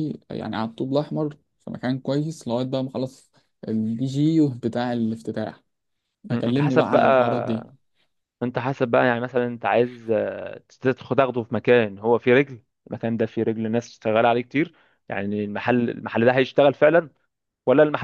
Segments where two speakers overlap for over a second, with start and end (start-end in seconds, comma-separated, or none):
6.3-7.7